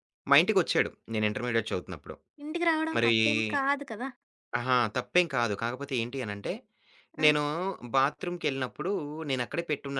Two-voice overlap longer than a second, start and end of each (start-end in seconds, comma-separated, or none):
none